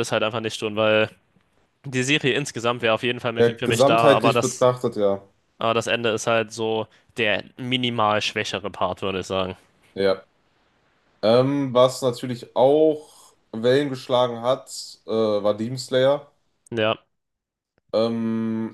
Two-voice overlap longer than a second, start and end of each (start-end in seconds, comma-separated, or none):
3.3-4.7